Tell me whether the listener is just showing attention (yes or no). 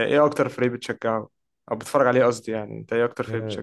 no